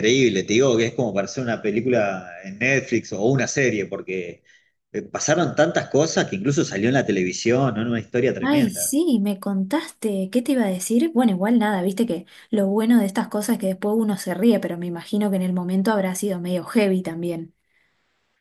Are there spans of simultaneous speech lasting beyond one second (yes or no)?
no